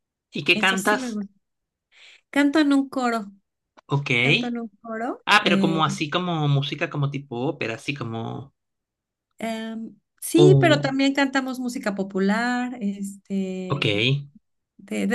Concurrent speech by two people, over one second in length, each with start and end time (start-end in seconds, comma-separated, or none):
none